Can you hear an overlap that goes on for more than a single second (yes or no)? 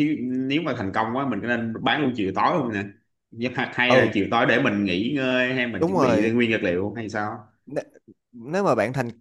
no